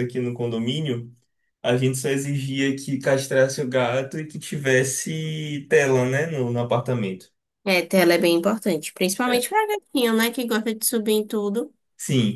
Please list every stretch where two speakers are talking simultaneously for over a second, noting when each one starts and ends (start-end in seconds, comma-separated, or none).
none